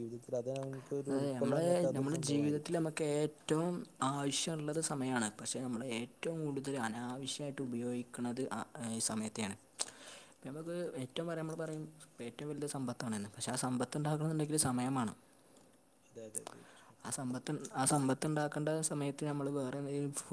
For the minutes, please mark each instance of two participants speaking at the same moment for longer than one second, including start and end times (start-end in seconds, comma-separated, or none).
1.1-2.8